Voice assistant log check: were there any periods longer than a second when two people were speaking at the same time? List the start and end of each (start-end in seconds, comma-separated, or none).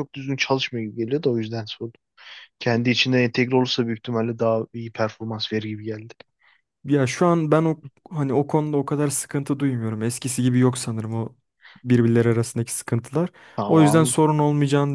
none